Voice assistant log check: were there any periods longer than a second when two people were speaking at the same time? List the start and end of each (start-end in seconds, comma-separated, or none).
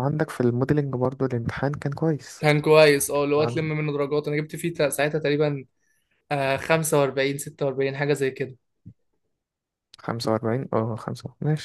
none